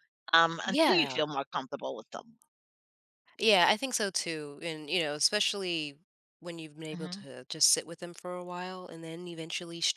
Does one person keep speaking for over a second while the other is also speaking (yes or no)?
no